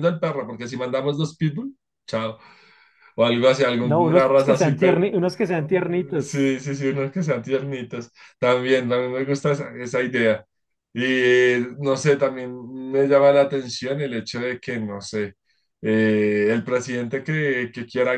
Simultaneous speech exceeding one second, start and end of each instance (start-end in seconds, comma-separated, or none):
3.8-5.1